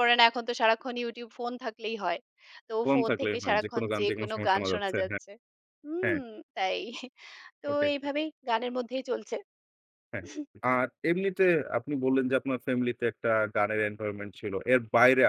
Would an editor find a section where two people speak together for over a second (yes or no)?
yes